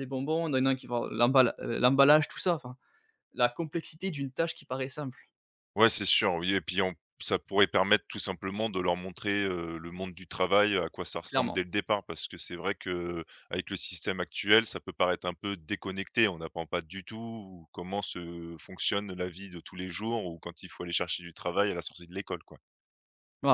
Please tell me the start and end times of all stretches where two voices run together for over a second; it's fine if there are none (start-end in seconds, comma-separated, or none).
none